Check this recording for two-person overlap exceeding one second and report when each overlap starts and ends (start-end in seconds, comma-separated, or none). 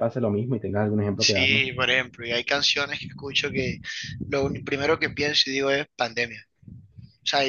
none